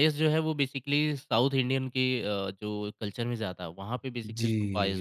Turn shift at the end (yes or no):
yes